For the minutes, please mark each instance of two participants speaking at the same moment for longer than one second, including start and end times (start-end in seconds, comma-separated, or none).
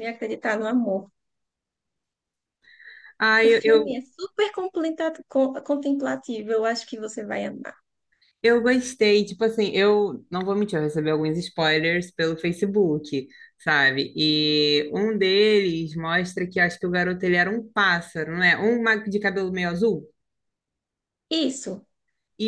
none